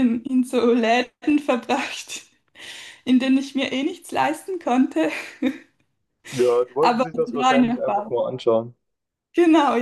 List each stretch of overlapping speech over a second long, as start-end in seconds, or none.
6.8-8.2